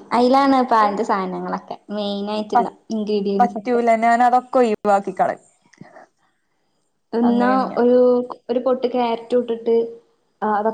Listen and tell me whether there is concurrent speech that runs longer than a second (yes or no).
no